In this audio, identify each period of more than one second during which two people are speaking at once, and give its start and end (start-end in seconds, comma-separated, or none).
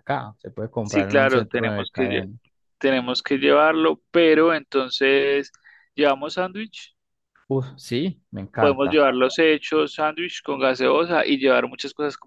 0.8-2.3